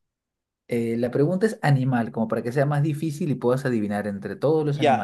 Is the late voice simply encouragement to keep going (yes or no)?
no